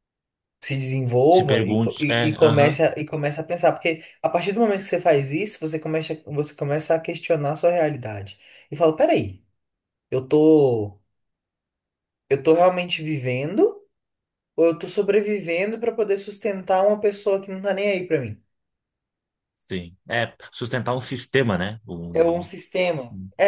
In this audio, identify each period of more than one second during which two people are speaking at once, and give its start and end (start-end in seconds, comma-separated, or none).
1.3-2.8